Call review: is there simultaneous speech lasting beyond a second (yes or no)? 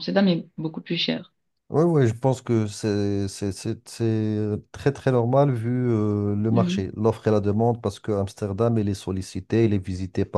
no